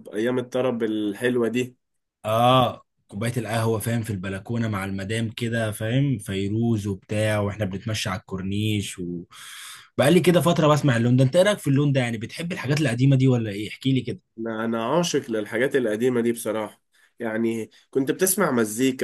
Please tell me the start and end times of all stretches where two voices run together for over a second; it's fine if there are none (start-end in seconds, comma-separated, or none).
none